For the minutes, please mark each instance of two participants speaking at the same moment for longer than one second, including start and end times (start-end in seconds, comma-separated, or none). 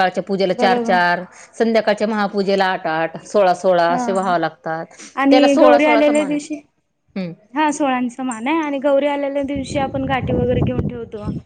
5.3-6.5